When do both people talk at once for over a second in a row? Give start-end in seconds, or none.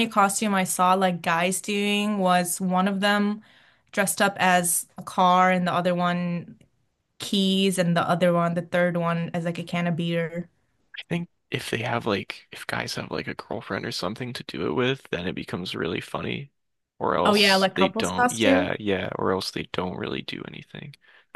17.2-18.7